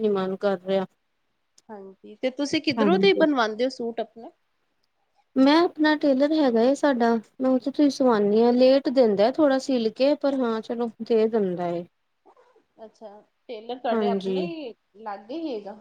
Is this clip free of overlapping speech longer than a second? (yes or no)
yes